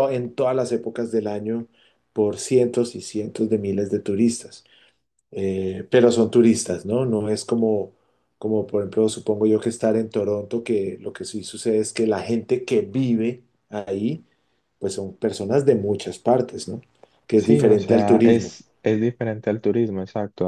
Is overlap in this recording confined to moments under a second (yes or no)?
no